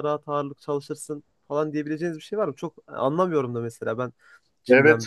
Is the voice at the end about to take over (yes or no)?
yes